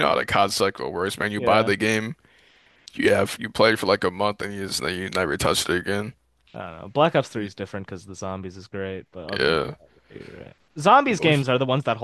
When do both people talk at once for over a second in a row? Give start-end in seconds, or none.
none